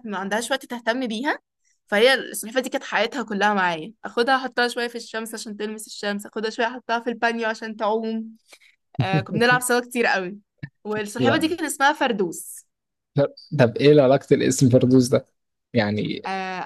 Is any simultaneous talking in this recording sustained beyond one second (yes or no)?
no